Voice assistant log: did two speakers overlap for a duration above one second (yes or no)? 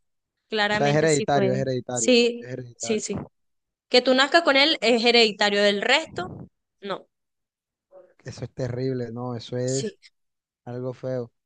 yes